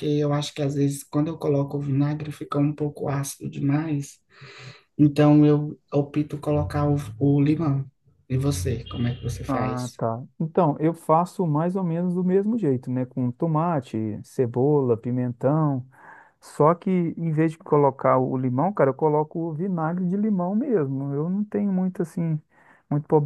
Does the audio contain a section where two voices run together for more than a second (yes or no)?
no